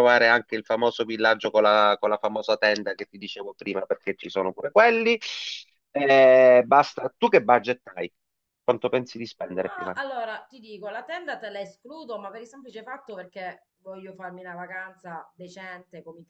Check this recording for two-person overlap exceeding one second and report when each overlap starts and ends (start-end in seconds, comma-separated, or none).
none